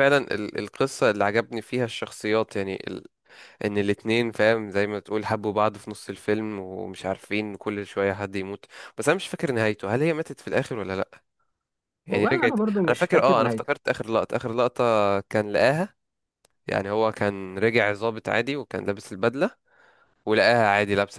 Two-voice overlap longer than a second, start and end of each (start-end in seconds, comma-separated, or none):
12.1-13.7